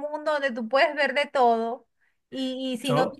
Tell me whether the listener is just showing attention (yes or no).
yes